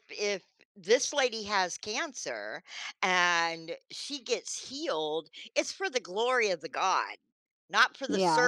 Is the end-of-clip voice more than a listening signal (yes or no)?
no